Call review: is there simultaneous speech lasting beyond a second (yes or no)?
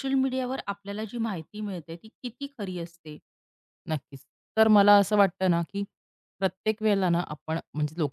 no